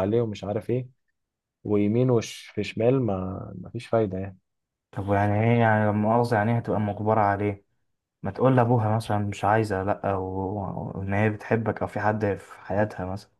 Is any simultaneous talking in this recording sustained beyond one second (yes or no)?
no